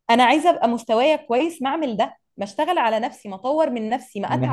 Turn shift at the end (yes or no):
yes